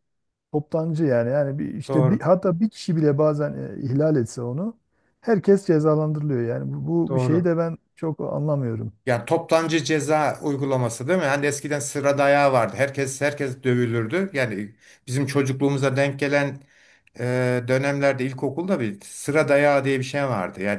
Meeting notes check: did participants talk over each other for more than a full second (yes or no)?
no